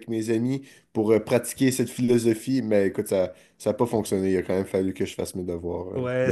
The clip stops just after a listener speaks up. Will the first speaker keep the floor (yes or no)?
no